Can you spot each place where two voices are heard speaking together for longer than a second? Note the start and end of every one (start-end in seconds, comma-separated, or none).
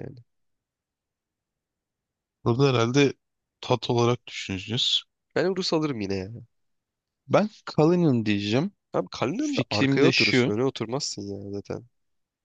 9.3-10.5